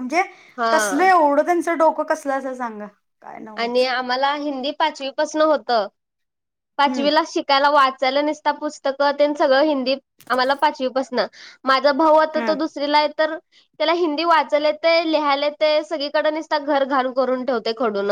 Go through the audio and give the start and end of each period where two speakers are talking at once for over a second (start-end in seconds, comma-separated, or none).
none